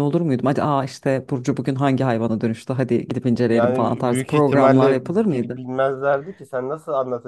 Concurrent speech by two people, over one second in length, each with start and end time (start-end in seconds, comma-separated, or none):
3.5-5.7